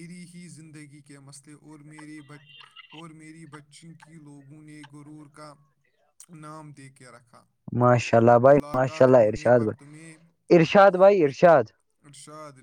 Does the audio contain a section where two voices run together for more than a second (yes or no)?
yes